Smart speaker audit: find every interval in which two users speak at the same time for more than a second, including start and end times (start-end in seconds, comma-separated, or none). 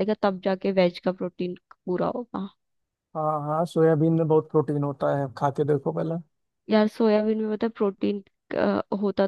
none